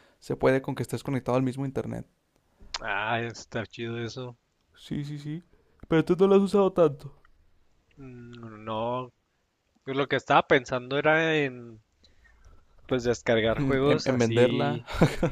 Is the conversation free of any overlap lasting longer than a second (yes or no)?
no